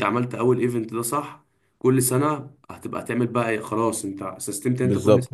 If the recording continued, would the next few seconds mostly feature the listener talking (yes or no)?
no